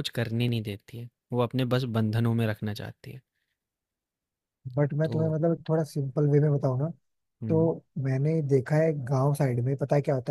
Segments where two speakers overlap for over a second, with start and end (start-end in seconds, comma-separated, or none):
none